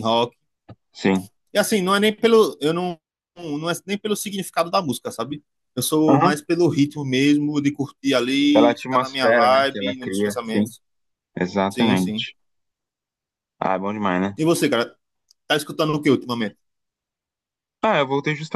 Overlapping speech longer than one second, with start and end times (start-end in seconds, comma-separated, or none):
8.5-10.7